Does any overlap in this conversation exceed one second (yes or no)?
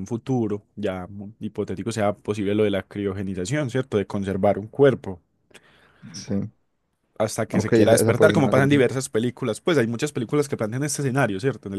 yes